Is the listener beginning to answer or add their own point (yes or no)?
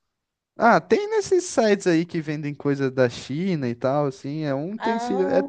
no